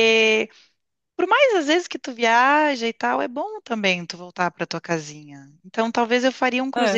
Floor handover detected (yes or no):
no